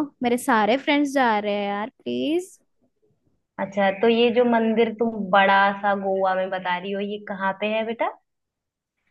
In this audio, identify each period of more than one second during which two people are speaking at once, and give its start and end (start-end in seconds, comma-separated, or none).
none